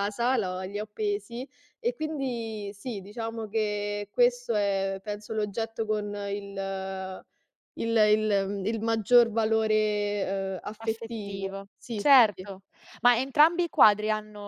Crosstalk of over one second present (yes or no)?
yes